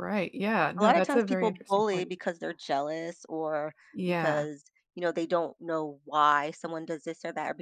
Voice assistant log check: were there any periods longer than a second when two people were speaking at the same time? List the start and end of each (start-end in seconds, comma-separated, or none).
0.8-2.1